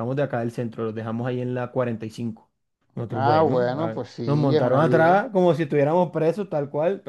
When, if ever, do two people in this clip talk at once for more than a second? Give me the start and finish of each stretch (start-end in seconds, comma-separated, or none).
3.1-5.2